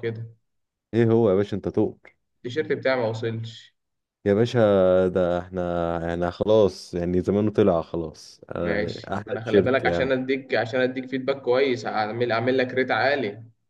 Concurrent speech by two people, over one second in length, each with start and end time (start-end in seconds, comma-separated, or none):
8.6-10.1